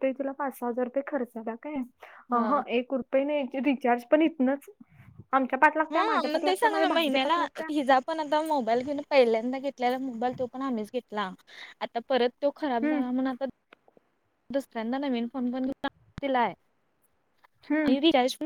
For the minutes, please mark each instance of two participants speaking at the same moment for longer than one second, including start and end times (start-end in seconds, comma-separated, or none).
5.9-7.7